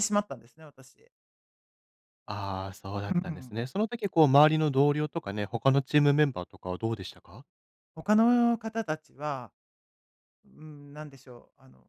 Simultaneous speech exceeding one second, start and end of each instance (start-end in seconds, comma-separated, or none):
none